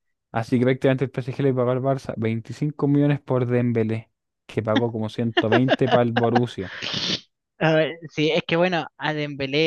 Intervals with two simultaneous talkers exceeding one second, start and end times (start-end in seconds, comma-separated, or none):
none